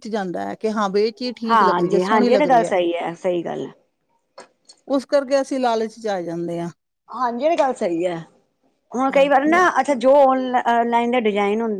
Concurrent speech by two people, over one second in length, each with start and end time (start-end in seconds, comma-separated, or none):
1.5-2.7